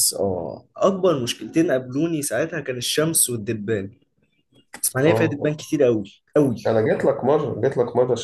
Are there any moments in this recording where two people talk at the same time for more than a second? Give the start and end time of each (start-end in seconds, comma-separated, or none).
none